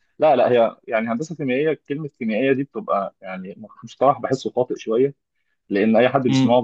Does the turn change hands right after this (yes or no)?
no